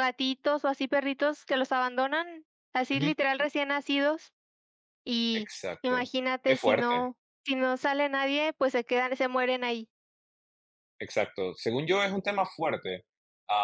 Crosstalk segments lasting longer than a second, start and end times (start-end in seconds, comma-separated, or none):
5.3-7.1